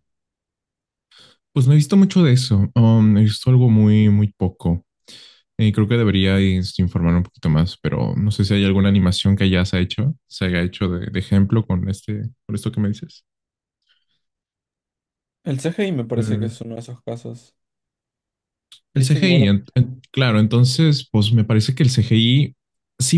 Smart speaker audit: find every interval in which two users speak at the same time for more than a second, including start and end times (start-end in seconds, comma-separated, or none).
none